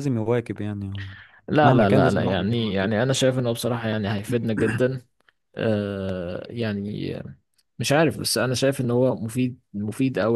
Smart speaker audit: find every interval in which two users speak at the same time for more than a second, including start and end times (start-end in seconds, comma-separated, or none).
1.6-2.9